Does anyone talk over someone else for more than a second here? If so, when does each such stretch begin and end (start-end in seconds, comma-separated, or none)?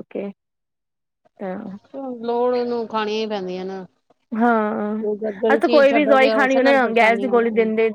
5.5-7.4